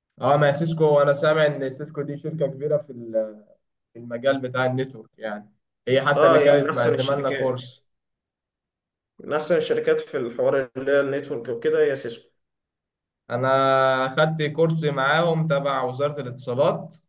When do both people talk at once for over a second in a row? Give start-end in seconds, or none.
6.2-7.7